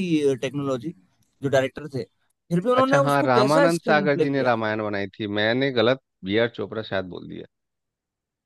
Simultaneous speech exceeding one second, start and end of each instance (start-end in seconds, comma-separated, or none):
2.8-4.6